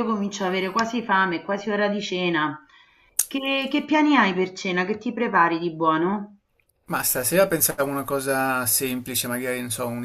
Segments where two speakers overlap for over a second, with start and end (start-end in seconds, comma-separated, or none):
none